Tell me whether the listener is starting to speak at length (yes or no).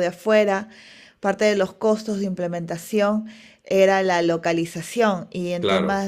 no